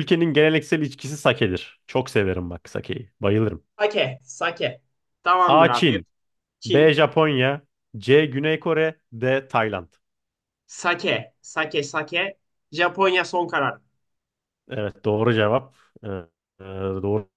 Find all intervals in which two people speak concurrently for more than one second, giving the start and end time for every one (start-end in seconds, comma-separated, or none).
none